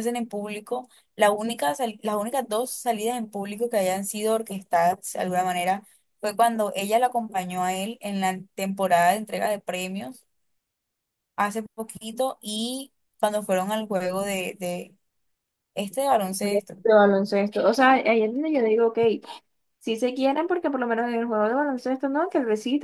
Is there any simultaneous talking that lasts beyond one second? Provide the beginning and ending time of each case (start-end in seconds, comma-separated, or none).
none